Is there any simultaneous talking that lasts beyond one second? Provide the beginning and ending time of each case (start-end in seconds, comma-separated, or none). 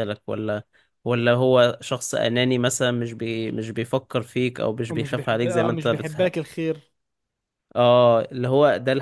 4.9-6.3